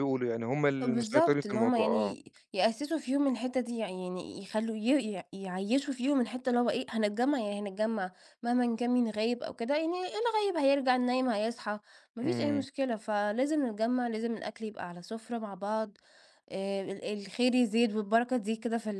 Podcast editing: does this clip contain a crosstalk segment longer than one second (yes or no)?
yes